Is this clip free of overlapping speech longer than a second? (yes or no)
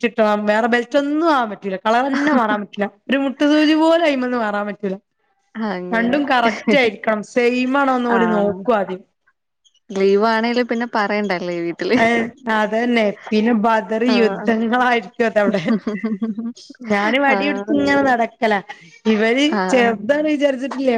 yes